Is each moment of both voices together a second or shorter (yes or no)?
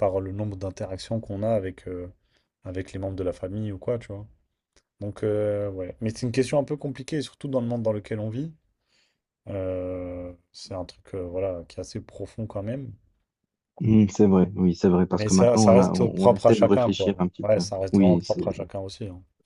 no